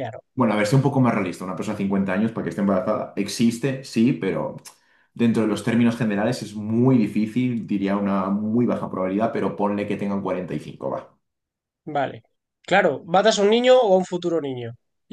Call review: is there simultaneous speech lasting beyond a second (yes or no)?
no